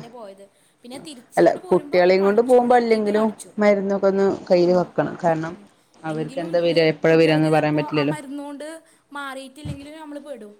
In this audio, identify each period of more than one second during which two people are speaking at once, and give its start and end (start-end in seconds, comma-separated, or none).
1.4-3.3